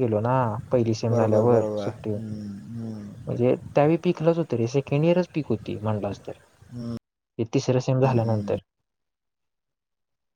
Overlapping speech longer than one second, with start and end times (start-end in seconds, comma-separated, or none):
1.1-3.4